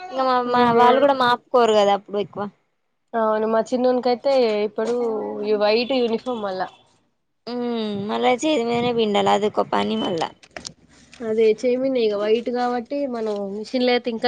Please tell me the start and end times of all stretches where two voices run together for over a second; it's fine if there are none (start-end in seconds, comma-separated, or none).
none